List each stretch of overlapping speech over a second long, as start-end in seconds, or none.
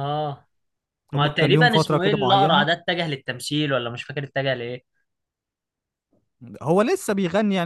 1.1-2.7